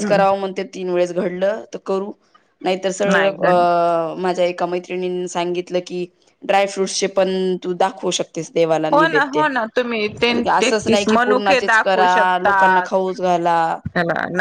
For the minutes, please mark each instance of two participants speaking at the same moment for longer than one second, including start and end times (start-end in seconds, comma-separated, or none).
10.3-12.9